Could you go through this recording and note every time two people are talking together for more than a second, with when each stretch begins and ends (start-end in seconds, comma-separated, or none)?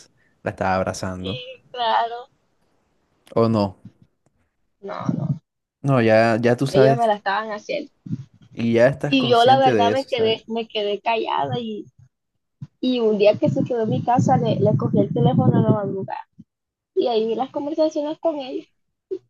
9.1-10.4